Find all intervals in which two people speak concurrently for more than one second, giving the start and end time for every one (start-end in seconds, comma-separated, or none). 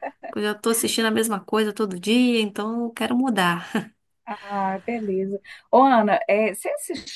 none